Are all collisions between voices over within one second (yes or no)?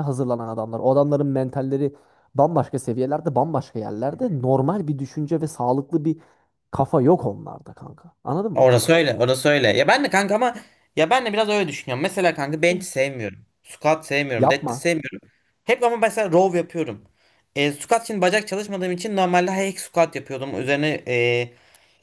yes